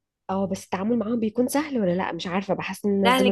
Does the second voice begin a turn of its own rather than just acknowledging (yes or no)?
yes